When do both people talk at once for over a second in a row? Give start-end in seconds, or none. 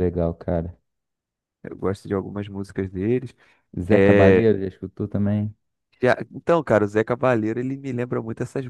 none